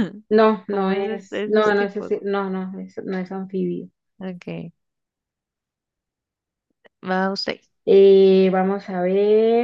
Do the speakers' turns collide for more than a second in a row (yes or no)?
yes